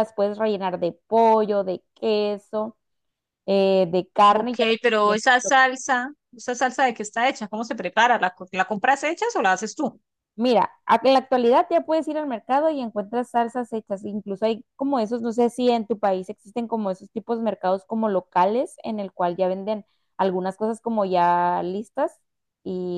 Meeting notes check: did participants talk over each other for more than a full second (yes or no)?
no